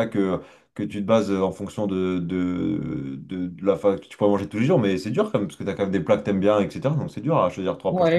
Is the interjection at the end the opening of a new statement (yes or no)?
yes